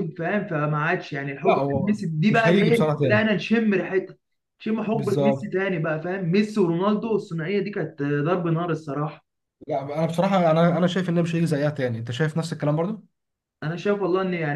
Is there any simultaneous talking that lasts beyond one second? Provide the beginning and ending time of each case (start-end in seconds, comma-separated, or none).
1.4-3.3